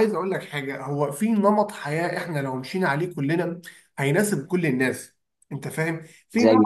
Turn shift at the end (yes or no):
no